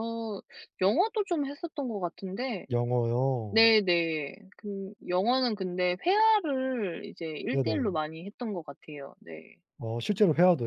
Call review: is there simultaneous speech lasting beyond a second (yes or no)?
no